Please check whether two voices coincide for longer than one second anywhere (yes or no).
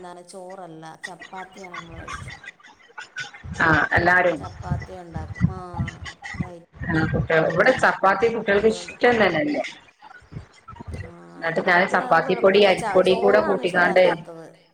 yes